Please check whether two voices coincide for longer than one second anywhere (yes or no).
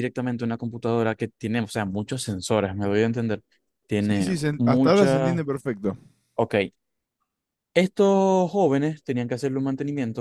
yes